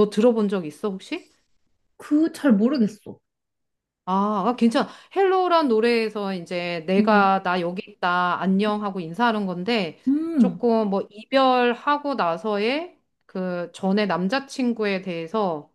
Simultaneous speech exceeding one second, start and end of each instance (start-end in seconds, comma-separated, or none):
none